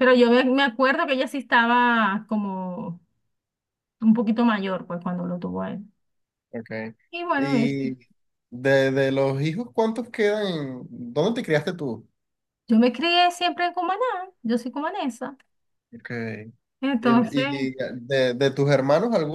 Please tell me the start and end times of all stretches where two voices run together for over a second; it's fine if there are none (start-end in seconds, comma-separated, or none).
none